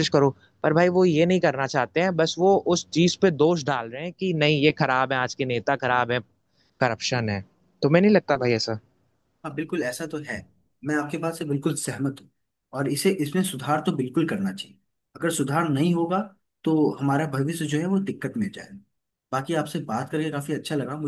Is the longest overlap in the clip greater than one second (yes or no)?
no